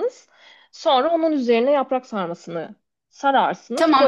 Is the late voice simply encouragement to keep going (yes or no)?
no